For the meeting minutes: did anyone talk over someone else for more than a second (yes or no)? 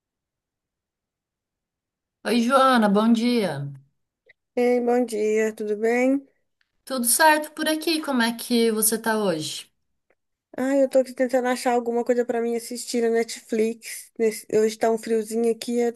no